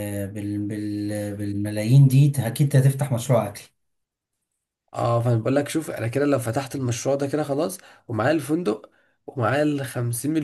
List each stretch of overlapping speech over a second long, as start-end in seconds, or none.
none